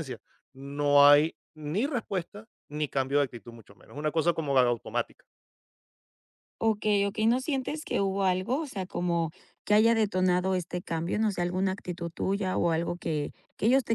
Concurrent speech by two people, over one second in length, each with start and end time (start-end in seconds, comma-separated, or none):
none